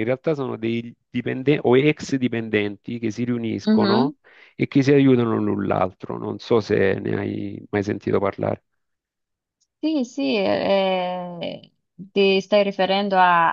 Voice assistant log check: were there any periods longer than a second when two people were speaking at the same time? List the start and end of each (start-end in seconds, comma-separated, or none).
none